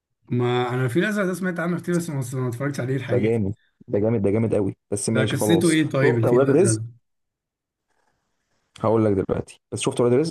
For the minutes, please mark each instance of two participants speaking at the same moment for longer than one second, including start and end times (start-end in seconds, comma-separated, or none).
5.1-6.8